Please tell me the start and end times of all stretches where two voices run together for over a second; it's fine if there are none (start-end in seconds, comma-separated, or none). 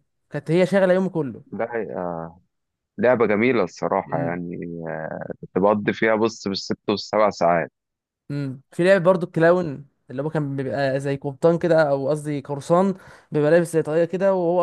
none